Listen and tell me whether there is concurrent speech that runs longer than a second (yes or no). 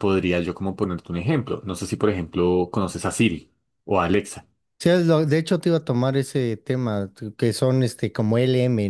no